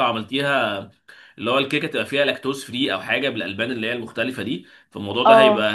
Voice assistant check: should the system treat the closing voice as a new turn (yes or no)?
no